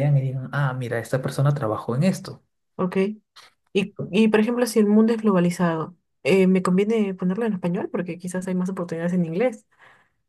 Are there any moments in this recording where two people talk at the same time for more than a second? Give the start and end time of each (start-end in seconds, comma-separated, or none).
none